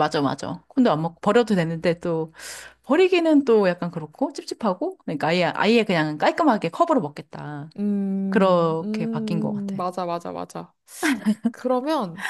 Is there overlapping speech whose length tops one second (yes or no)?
yes